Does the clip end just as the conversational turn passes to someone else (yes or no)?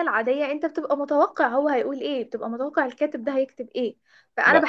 no